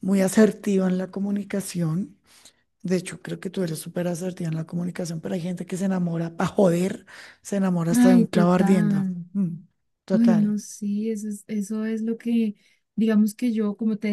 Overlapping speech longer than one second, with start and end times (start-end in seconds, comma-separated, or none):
7.9-9.2